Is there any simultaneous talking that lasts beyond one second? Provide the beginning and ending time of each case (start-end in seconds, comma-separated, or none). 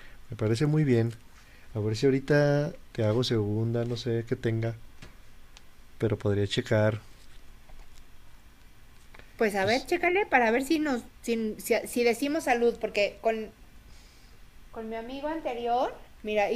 none